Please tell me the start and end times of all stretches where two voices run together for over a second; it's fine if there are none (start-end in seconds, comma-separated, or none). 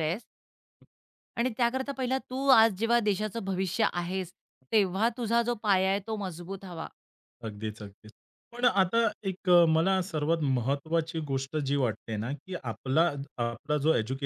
none